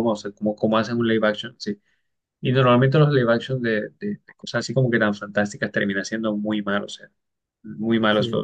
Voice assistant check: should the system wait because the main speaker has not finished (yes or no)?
yes